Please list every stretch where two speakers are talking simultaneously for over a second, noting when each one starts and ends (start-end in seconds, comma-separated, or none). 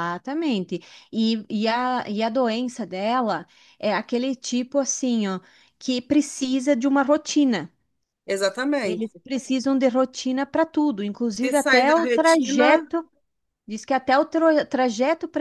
11.3-12.9